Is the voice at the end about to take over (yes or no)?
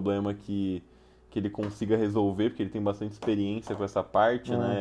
no